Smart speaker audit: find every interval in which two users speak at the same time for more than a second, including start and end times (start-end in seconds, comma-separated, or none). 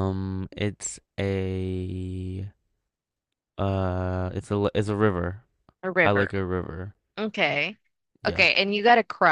none